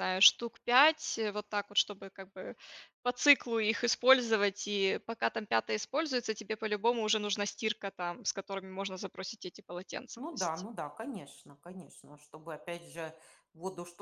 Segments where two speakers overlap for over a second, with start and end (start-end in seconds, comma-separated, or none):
none